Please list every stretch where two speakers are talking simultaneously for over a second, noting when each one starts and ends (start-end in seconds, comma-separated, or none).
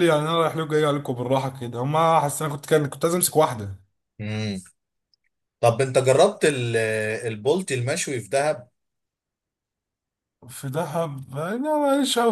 none